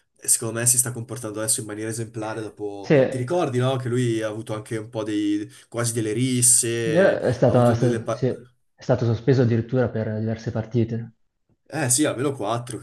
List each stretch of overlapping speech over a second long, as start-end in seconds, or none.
6.9-8.3